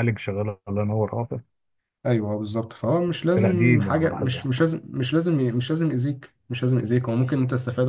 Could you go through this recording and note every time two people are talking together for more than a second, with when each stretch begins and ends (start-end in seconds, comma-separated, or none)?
3.1-4.5